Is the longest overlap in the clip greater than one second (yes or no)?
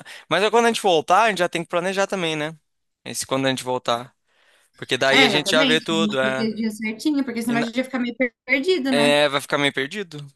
yes